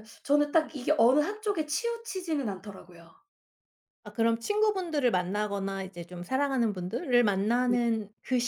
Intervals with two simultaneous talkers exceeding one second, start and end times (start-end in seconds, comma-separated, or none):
none